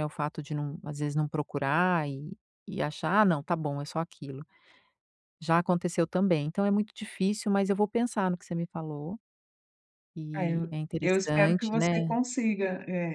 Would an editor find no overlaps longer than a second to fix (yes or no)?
no